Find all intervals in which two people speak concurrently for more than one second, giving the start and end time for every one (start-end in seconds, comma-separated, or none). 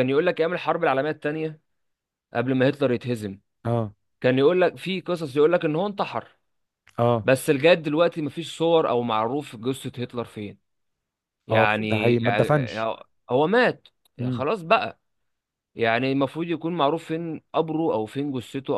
11.5-12.8